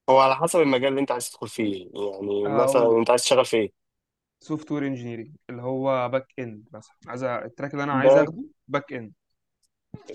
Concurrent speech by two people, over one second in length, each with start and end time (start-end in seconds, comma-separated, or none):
none